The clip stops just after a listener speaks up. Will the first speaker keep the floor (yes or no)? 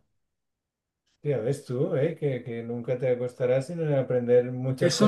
no